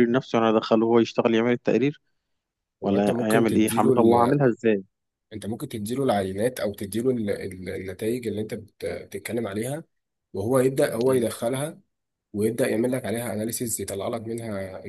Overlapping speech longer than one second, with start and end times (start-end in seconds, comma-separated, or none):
2.8-4.3